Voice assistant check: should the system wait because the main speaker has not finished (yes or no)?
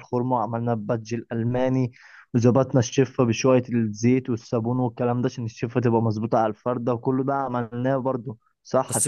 no